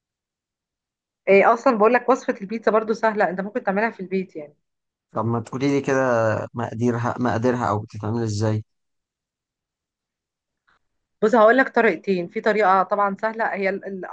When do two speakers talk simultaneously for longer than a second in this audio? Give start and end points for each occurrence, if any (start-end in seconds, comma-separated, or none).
none